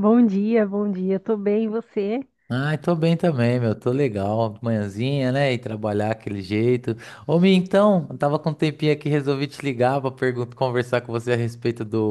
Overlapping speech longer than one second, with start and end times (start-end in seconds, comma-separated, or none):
none